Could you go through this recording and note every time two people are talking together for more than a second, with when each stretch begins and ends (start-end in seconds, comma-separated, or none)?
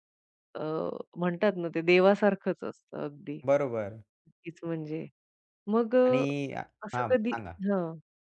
none